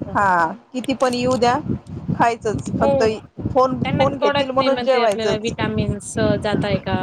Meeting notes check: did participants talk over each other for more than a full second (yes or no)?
yes